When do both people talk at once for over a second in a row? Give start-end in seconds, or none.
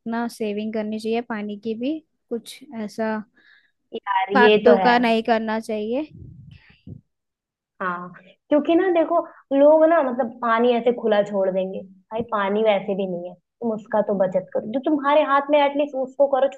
none